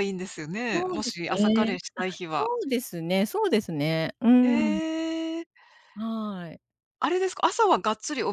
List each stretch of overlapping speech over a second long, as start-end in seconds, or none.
0.7-2.5